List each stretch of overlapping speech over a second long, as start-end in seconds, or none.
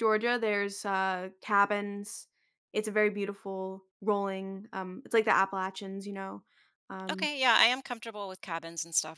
none